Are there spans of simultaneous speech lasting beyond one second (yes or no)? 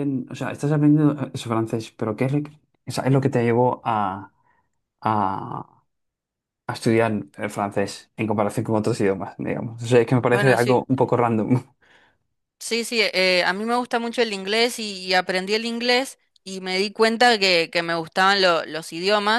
no